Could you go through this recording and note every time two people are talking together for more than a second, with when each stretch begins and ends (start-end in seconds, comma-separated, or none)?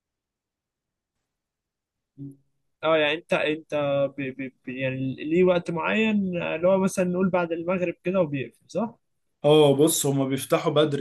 none